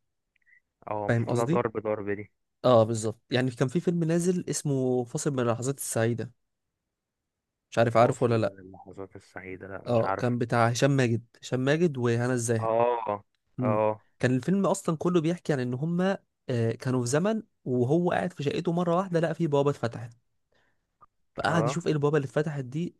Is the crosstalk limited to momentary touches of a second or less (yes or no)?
yes